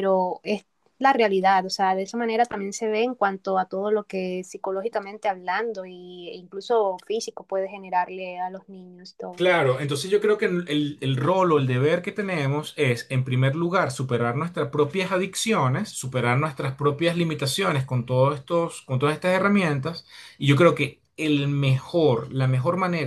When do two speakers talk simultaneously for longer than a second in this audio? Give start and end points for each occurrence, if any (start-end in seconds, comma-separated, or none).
none